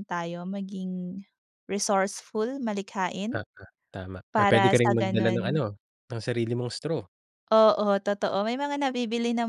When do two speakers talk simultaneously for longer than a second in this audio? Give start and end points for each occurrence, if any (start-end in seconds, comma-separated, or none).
4.3-5.6